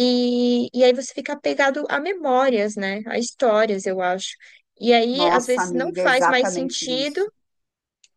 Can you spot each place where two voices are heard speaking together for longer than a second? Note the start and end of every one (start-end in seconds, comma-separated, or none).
5.1-7.2